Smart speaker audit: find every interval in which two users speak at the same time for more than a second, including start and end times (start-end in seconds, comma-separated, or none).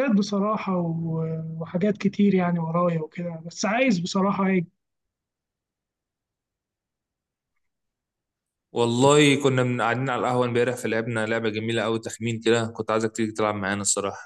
none